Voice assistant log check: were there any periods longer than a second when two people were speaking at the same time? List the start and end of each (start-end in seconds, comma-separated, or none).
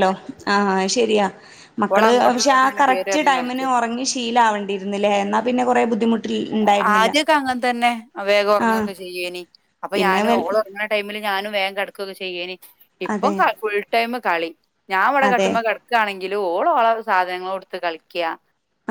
1.9-3.7